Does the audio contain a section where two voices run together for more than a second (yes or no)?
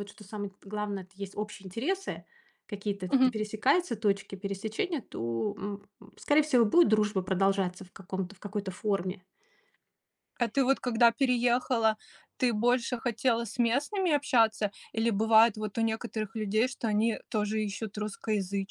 no